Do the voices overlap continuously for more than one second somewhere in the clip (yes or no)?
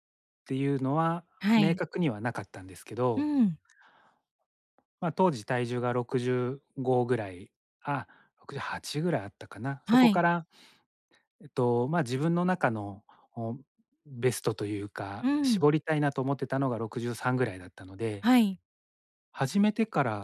no